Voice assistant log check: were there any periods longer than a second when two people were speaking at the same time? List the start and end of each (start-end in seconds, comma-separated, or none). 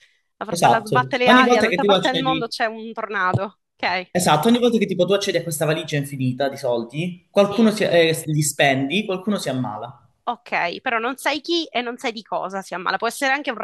0.5-2.5